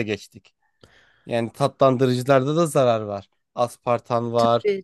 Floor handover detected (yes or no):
no